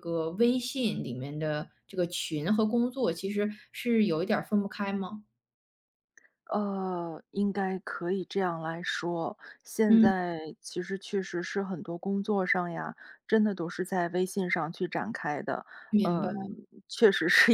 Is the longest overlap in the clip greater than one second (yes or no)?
no